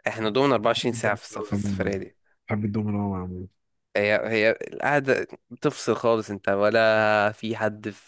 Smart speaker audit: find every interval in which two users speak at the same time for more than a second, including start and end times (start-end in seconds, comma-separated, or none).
0.8-2.0